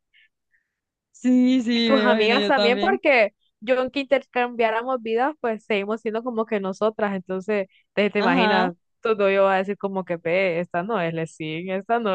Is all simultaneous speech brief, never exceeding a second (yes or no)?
no